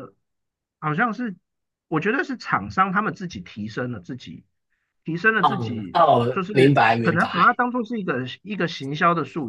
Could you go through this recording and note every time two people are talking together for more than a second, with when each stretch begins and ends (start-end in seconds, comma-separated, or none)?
5.4-7.5